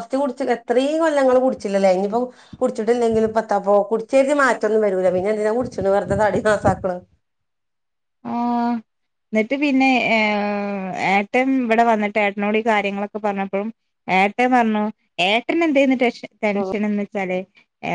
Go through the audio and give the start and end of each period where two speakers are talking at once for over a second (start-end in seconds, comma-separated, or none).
none